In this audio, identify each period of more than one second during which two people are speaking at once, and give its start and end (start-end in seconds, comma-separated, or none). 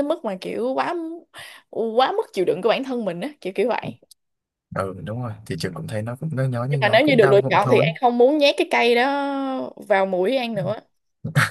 6.7-7.9